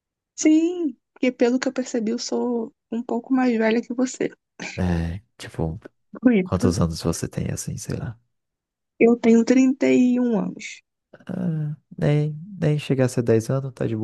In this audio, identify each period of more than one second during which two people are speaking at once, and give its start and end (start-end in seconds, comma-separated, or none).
none